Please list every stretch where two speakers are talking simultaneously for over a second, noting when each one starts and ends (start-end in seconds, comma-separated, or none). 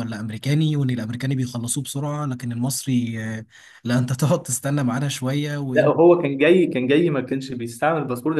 none